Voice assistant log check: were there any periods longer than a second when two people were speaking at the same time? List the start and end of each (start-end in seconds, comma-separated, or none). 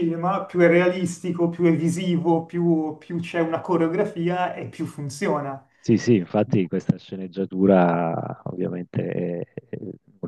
none